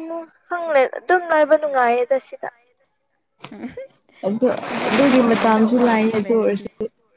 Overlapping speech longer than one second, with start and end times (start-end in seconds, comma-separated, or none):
4.9-6.7